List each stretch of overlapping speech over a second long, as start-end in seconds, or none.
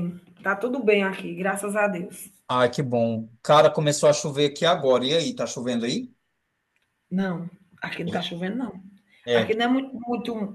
none